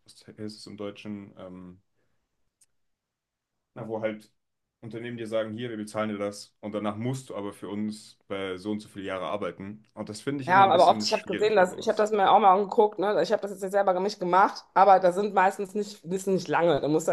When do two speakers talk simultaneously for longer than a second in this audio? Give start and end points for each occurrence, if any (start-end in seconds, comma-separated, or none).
10.5-12.1